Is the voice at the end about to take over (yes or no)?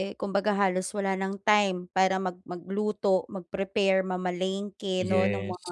no